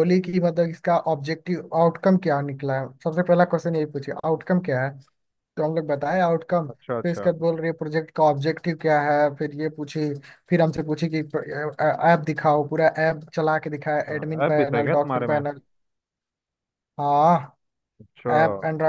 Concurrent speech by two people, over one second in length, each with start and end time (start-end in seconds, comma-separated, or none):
13.9-15.4